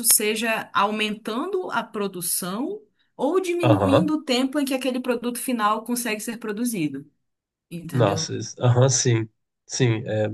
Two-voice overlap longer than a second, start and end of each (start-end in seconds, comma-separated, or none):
none